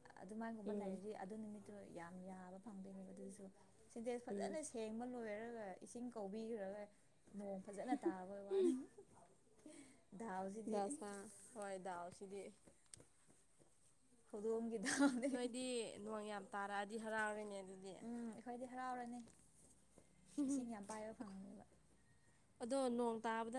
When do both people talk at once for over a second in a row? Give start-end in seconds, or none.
none